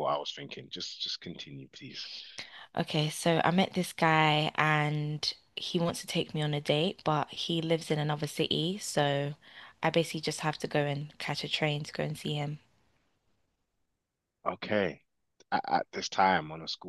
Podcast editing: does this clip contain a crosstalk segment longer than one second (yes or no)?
no